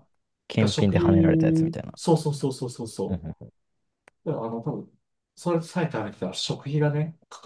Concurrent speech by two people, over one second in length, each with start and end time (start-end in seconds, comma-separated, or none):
0.6-1.9